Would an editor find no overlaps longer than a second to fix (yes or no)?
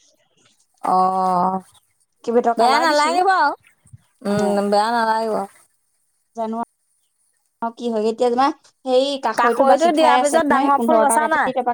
no